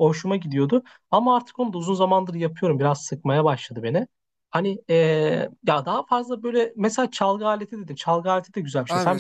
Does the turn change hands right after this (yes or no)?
yes